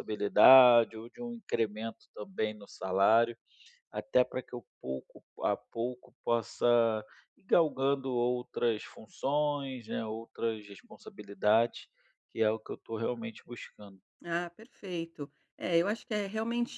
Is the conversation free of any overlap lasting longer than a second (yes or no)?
yes